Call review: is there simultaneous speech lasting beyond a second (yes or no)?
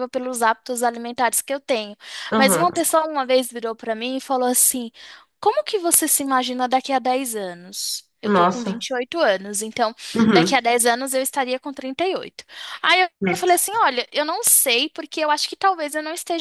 no